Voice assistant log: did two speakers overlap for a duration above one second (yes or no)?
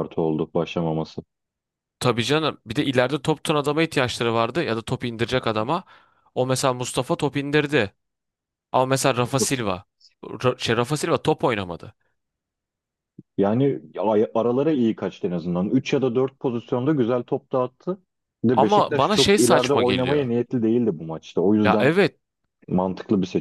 yes